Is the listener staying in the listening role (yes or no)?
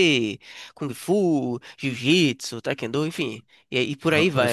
no